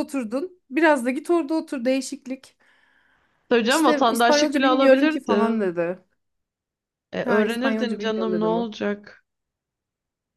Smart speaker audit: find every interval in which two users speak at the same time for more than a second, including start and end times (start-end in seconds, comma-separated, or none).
3.7-5.5, 7.2-8.7